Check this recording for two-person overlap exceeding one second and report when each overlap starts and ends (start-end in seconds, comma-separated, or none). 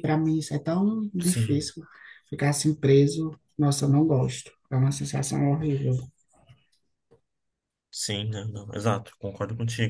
none